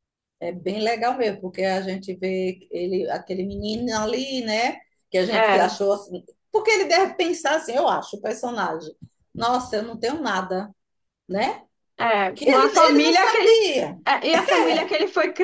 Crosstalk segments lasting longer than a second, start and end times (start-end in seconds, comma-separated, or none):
12.3-13.6